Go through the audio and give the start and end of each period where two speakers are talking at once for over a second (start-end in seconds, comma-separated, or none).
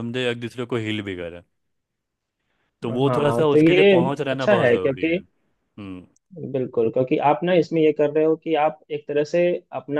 3.1-5.2